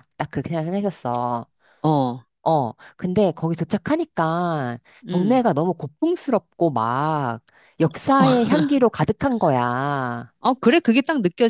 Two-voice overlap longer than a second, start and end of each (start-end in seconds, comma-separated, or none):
none